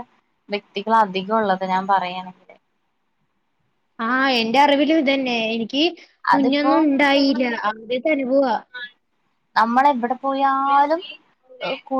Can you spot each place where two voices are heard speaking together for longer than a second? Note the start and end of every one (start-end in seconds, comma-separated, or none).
none